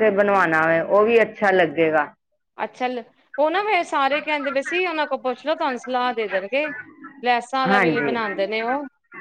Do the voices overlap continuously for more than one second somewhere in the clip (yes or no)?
no